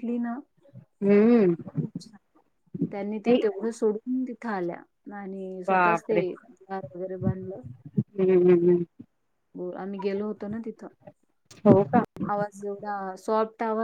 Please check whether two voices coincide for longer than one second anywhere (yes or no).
no